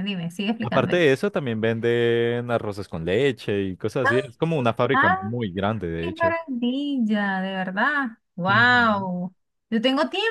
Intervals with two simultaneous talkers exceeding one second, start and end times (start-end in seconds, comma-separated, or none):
none